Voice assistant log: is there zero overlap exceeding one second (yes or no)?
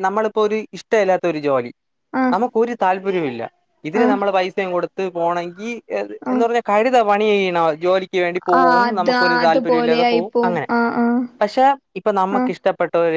no